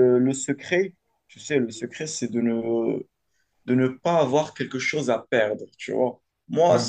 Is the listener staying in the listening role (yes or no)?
yes